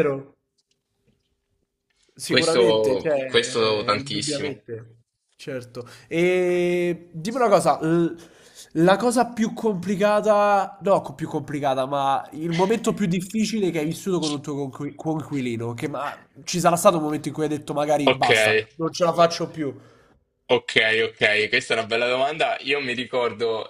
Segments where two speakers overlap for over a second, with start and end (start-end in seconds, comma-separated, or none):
2.3-4.6